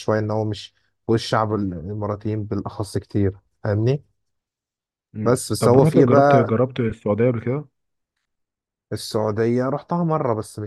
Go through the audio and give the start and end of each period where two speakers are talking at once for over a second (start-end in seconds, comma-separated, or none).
5.2-6.5